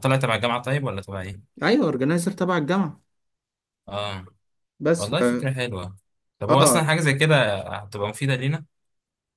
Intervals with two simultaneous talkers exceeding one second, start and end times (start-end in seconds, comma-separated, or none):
none